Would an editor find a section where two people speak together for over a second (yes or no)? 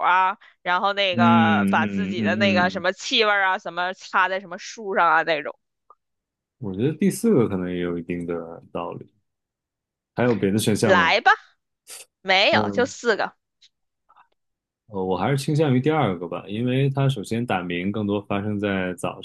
yes